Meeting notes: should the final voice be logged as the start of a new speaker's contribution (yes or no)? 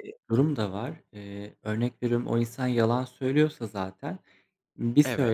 no